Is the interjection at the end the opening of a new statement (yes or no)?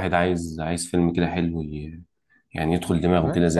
yes